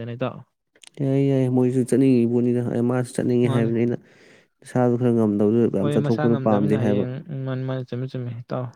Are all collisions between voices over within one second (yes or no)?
no